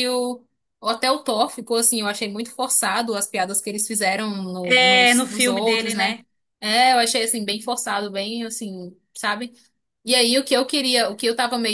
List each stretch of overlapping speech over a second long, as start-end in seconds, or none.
4.6-6.2